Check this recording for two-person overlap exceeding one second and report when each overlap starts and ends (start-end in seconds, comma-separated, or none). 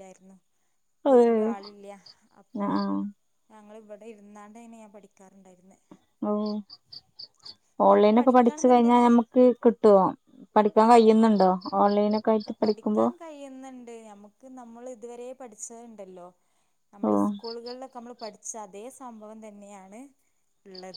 7.9-9.2